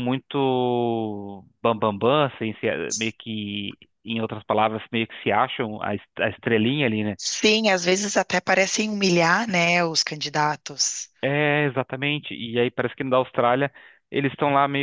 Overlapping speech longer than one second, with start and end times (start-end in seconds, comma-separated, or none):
none